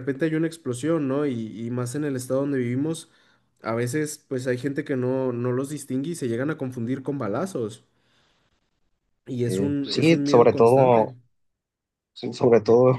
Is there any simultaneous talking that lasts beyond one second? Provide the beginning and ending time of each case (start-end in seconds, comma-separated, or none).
9.4-11.2